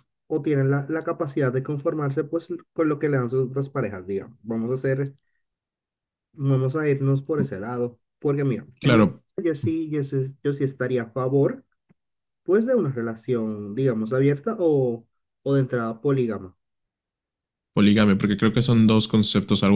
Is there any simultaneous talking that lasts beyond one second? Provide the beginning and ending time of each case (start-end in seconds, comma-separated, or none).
none